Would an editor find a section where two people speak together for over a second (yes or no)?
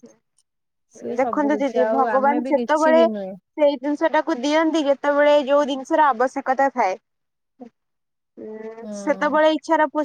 yes